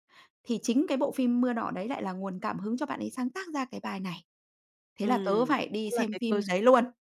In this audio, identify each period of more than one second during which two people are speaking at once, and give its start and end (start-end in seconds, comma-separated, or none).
5.0-6.7